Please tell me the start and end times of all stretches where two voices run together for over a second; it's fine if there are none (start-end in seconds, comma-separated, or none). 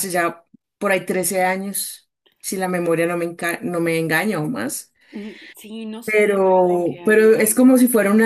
6.0-7.5